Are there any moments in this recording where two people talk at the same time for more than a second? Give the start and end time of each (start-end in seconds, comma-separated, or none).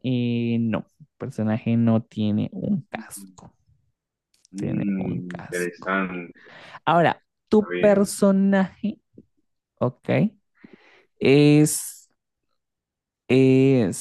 4.6-6.0